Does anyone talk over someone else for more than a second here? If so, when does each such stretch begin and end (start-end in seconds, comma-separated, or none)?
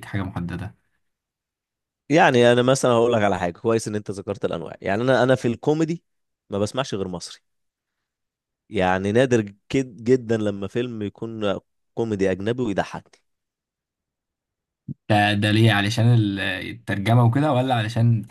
none